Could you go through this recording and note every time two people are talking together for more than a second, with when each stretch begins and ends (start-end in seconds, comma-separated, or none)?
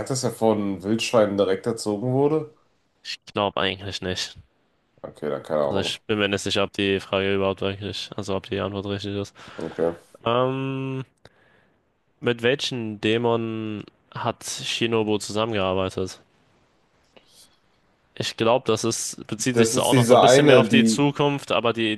19.5-21.1